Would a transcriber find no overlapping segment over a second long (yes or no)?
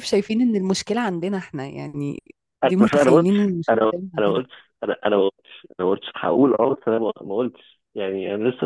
no